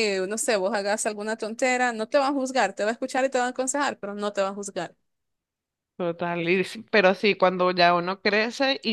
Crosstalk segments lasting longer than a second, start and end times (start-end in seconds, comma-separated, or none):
none